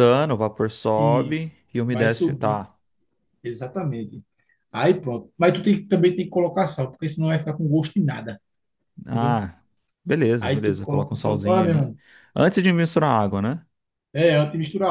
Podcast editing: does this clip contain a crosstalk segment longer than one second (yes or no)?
yes